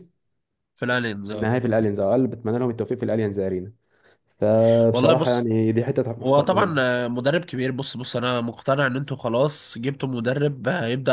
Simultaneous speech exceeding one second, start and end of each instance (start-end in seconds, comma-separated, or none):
none